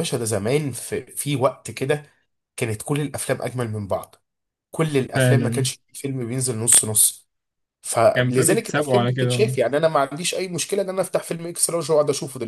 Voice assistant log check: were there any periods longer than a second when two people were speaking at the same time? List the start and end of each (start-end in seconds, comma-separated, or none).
8.1-9.5